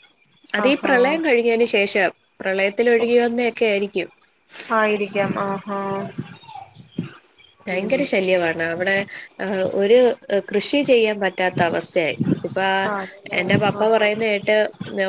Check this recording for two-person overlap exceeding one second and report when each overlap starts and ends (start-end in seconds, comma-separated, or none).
none